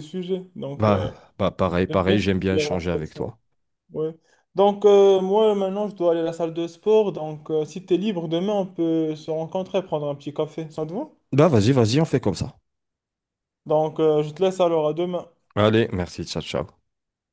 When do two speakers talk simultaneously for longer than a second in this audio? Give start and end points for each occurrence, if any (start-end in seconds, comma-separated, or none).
1.9-3.3